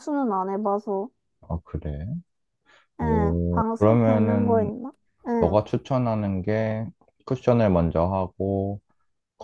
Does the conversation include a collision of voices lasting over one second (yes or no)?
yes